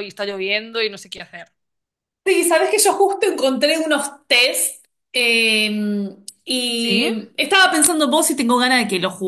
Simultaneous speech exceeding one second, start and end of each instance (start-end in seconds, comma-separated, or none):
none